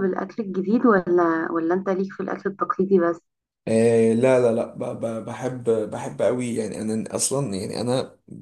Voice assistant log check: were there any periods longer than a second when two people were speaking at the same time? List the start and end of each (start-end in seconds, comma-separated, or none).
none